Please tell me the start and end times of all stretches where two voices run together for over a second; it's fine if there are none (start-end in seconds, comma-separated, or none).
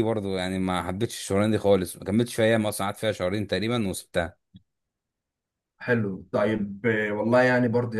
none